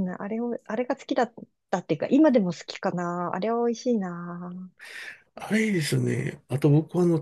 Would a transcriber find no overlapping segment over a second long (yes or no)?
yes